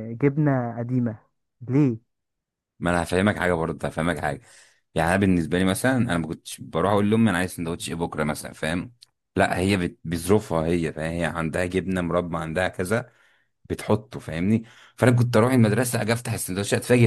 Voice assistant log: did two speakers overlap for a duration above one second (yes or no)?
no